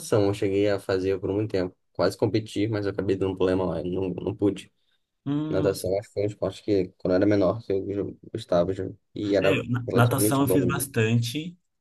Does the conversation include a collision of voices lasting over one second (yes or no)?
yes